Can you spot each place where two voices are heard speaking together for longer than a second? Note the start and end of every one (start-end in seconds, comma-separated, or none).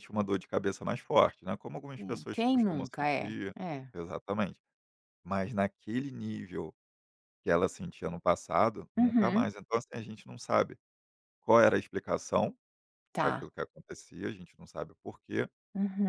2.0-3.5